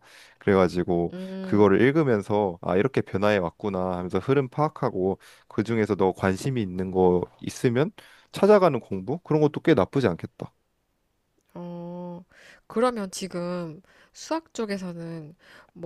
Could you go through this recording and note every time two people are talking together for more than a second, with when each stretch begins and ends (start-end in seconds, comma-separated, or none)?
none